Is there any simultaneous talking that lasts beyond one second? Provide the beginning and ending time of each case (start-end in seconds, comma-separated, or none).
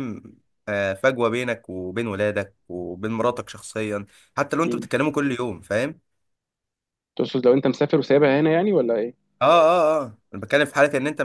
none